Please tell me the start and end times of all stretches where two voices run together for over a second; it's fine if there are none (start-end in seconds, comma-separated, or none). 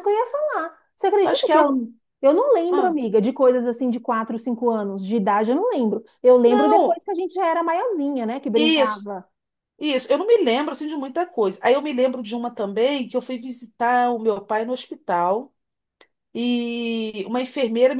none